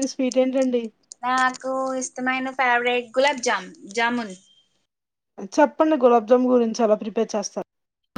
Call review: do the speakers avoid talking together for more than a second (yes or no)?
yes